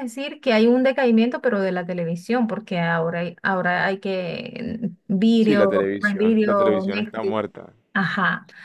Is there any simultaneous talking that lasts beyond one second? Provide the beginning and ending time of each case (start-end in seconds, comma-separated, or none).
5.4-7.4